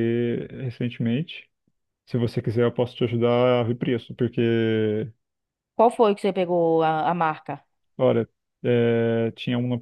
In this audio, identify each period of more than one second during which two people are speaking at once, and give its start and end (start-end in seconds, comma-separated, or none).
none